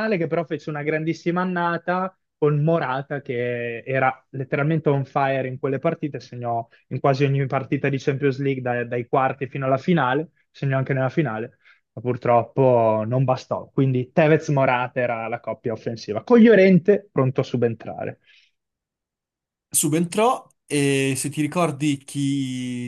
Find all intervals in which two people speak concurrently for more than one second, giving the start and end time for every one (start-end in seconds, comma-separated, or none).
none